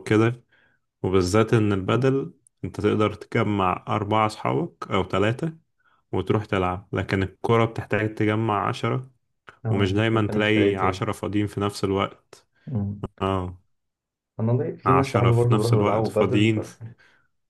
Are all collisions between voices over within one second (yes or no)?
no